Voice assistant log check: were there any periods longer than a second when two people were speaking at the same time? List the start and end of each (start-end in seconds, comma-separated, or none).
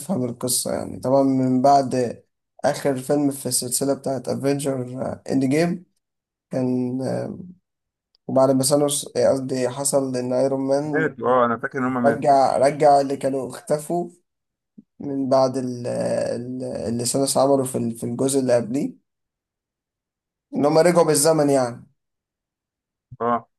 none